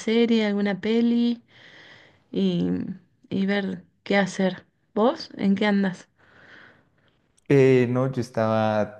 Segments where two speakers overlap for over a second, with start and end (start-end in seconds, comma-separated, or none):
none